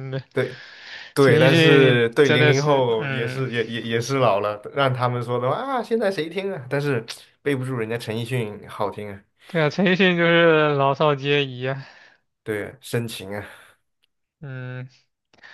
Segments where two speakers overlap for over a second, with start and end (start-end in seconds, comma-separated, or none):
1.2-3.5